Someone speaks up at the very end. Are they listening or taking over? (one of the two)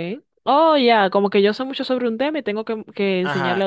taking over